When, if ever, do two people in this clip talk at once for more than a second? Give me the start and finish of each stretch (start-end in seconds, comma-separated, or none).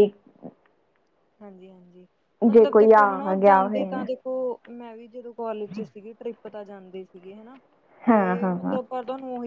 2.5-4.0